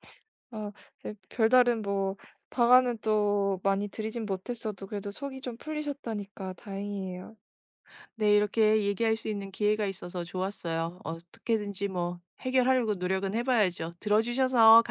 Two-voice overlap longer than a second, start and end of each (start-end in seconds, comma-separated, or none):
none